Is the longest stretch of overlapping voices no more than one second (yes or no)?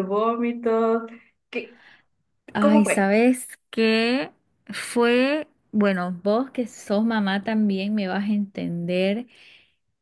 yes